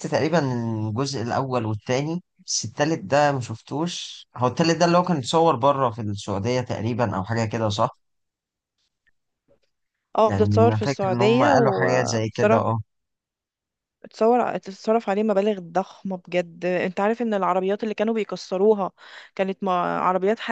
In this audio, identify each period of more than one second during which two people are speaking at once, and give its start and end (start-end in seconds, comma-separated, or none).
10.2-11.8